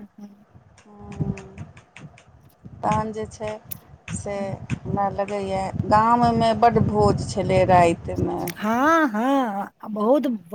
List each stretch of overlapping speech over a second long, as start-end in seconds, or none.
none